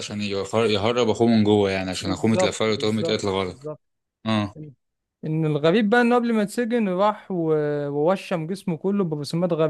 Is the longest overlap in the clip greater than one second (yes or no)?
yes